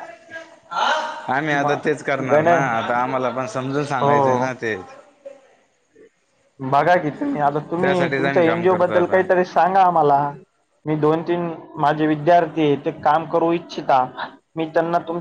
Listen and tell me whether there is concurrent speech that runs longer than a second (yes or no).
yes